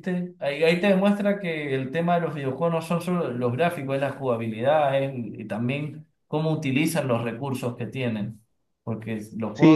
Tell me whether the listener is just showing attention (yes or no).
no